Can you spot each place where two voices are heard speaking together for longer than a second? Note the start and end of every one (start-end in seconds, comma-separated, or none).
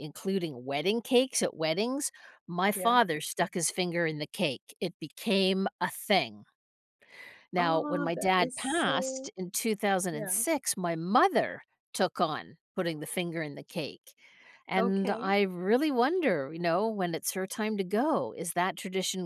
7.6-9.3